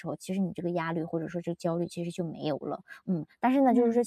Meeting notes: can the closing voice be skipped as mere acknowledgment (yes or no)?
yes